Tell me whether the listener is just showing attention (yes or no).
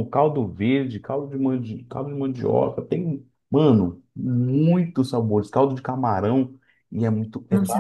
no